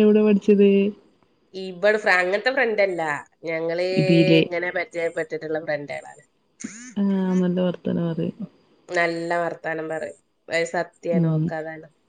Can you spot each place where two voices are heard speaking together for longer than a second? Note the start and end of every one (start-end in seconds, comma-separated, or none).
none